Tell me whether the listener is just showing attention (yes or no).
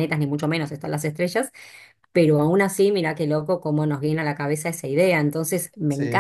yes